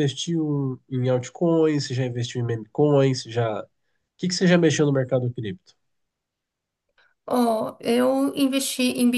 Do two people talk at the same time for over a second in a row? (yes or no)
no